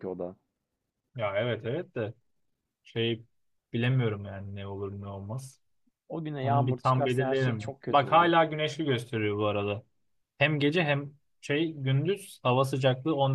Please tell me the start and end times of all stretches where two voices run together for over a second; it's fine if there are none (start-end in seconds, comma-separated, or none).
6.4-8.3